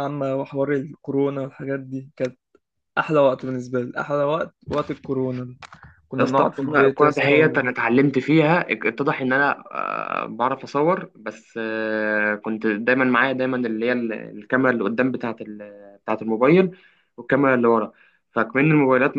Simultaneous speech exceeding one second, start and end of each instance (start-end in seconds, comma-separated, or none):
6.2-7.7